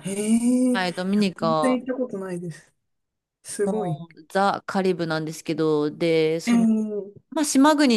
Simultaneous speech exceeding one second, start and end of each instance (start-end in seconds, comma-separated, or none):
none